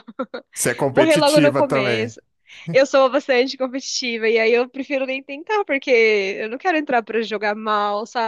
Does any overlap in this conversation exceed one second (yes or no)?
yes